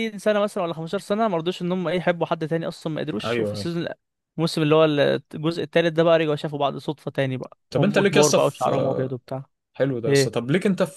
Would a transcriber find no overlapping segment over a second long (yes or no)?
no